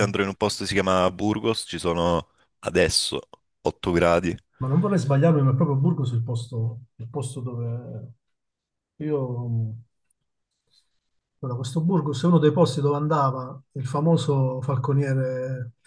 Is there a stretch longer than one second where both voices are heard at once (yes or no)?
no